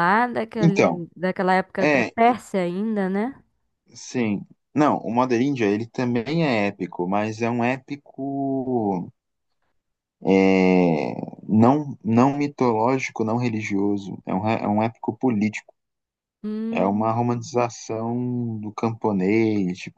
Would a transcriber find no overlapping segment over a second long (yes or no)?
yes